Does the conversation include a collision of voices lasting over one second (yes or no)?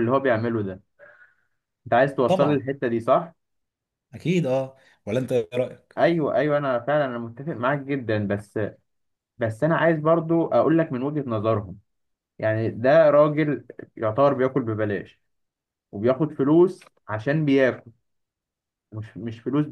no